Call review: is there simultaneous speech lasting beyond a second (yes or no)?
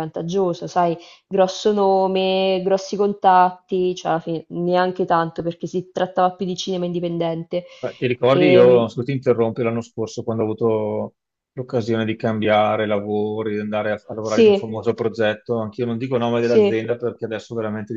no